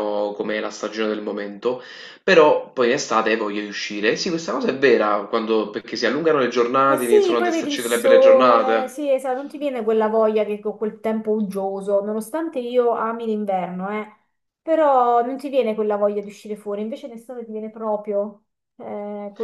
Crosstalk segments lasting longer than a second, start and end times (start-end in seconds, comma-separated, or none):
6.8-8.9